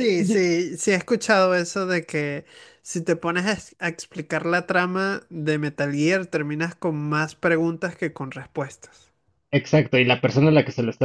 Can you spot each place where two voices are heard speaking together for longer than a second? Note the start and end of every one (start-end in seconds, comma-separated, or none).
none